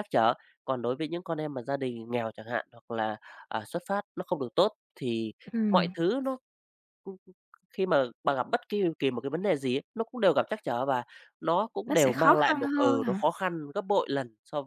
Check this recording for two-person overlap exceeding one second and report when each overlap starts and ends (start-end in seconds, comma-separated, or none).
11.9-13.3